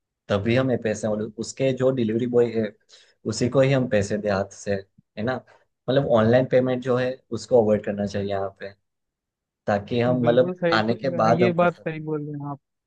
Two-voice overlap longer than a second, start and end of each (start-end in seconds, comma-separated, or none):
10.1-11.9